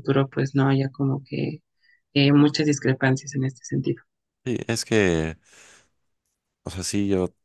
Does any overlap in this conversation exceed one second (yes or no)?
no